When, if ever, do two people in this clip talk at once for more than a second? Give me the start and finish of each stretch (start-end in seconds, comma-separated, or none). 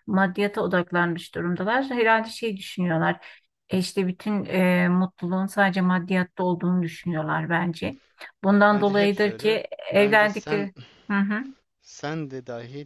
8.7-10.7